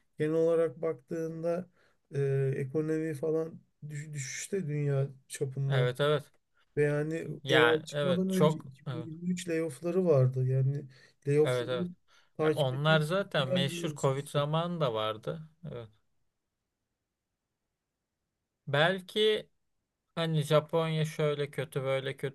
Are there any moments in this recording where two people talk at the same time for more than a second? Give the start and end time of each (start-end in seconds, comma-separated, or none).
7.4-9.1, 12.4-14.4